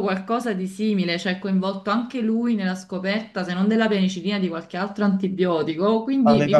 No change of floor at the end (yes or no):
no